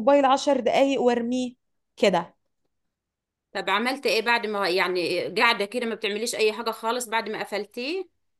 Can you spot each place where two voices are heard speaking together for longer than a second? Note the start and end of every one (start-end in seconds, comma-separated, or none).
none